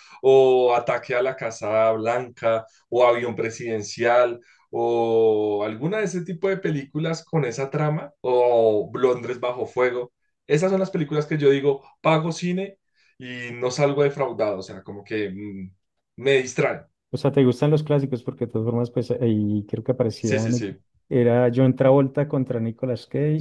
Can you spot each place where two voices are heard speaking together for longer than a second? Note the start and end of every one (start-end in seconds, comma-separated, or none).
none